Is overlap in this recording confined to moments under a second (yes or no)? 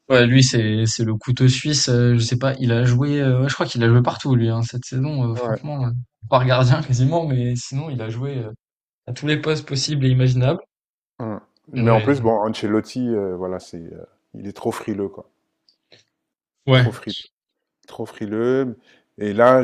yes